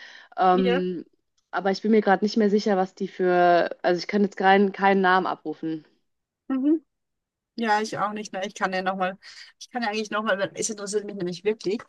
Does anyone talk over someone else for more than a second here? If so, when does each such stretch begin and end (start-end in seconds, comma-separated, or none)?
none